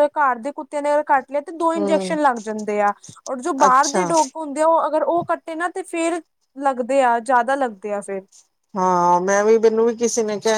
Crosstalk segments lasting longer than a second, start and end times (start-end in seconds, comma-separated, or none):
none